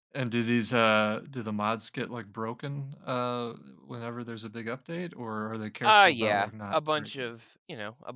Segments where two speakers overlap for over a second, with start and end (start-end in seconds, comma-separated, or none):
5.8-7.4